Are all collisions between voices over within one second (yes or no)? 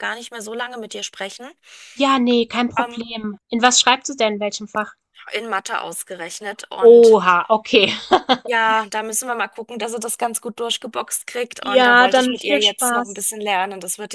no